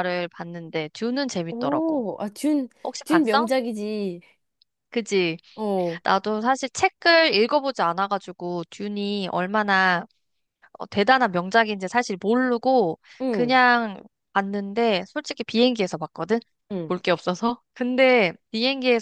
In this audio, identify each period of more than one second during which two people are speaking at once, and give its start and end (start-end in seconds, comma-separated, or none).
none